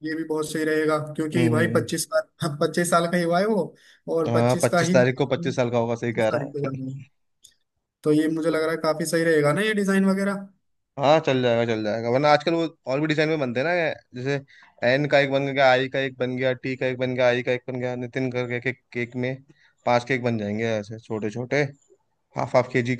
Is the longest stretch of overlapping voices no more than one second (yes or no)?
no